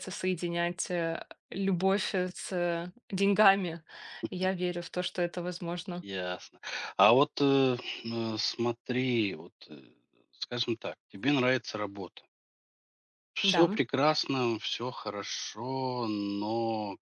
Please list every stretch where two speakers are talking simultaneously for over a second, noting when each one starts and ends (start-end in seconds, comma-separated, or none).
none